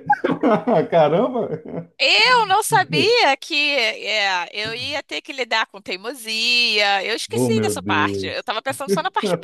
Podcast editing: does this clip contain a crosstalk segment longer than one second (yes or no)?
yes